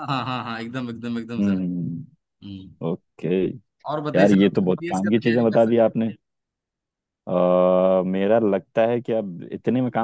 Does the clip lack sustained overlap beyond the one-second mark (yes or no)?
no